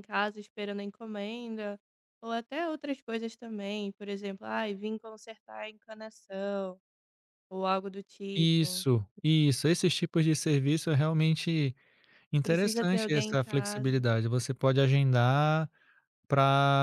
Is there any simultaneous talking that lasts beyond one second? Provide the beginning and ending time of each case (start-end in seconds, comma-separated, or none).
12.4-14.1